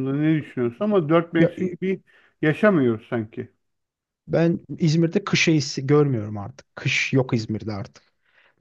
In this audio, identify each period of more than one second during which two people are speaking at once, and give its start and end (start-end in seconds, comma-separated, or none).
none